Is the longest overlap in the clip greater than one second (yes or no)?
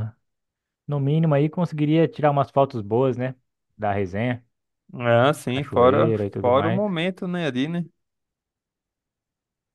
yes